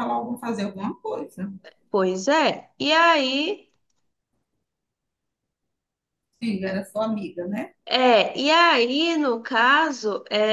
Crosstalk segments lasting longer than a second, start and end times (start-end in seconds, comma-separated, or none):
none